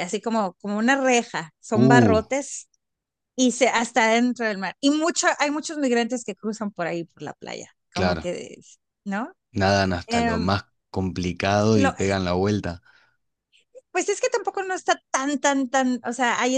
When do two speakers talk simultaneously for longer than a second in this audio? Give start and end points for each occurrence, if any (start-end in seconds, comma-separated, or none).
none